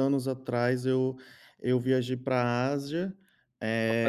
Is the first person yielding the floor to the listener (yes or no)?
no